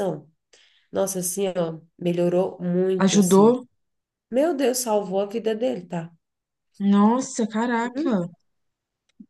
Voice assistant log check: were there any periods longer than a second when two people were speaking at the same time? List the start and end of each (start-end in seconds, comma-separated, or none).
none